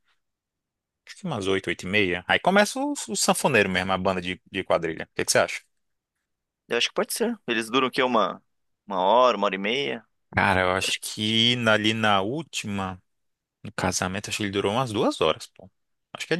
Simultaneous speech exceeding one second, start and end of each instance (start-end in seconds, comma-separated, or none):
none